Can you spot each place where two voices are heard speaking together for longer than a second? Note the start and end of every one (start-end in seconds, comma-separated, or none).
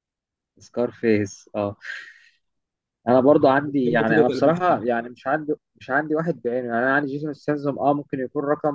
3.1-4.8